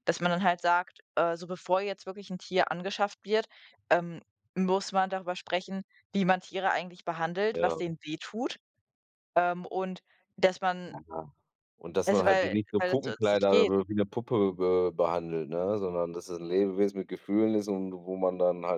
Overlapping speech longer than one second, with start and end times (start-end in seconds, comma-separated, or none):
12.1-13.7